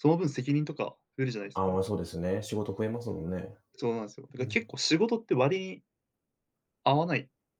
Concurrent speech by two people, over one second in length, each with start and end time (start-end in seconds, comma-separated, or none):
none